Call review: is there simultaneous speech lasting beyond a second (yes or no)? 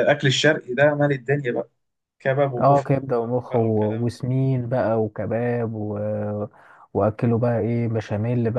yes